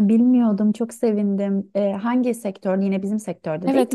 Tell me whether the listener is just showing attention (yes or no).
no